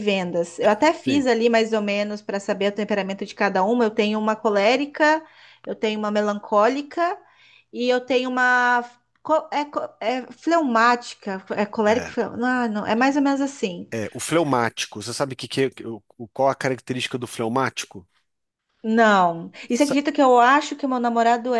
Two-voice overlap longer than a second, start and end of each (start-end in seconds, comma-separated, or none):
none